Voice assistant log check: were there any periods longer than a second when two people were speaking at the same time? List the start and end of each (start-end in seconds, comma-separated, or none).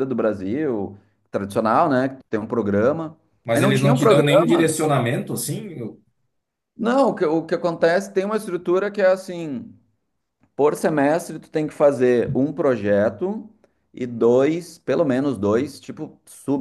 3.4-4.8